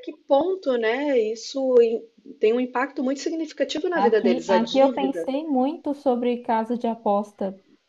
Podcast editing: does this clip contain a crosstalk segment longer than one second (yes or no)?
yes